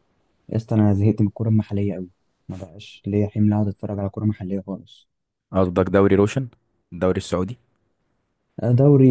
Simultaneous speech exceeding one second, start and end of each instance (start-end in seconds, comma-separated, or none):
none